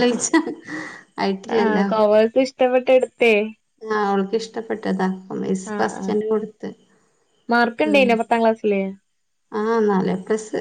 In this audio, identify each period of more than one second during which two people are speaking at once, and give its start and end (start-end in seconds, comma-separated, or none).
none